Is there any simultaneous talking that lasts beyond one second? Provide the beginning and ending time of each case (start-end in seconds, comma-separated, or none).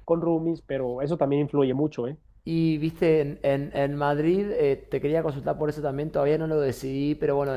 none